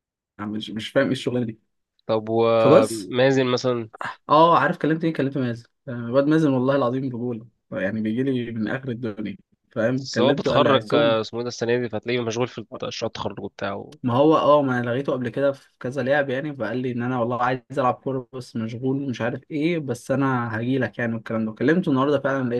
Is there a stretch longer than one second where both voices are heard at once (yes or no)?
yes